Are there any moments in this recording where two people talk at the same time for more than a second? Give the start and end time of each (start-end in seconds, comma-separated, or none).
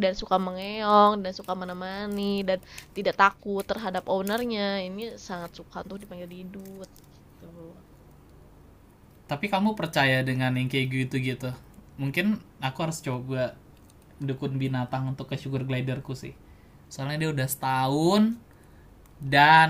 none